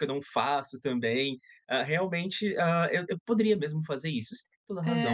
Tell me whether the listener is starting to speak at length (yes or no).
yes